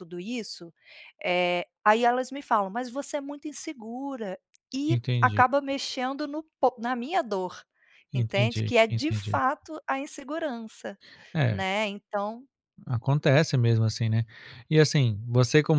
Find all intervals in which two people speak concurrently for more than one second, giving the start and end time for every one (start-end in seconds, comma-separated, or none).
8.1-9.4